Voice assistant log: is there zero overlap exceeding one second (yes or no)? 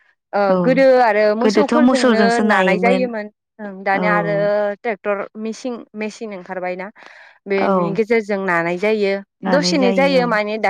no